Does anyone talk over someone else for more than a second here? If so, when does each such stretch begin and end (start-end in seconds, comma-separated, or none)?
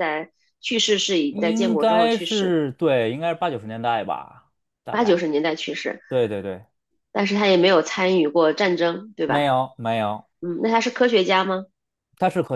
1.3-2.6